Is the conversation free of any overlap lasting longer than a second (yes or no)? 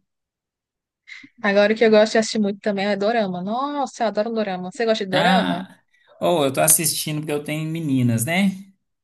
yes